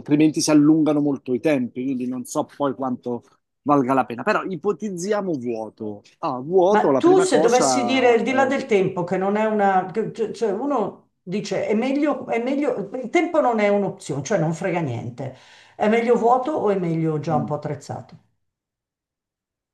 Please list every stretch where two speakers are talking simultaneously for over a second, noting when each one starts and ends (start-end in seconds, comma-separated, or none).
6.7-8.7